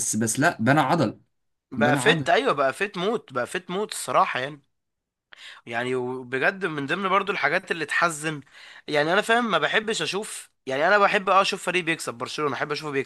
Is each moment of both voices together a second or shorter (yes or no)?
yes